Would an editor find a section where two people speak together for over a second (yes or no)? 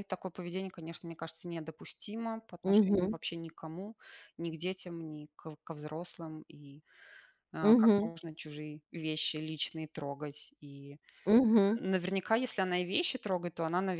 no